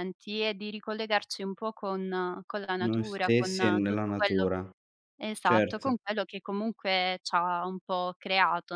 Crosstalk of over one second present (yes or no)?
yes